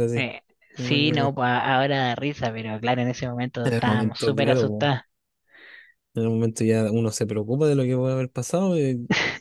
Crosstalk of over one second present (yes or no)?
yes